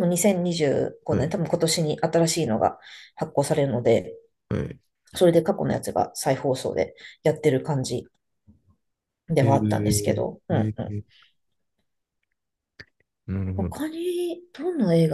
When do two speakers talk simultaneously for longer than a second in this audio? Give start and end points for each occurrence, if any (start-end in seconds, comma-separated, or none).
9.4-10.9